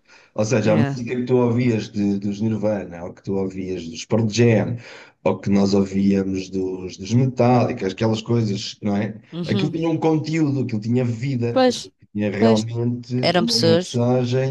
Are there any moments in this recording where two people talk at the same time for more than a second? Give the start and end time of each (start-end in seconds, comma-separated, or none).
none